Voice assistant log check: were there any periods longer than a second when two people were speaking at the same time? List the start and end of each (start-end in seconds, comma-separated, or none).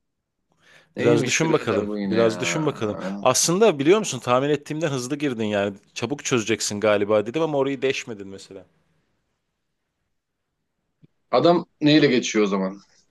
1.0-2.4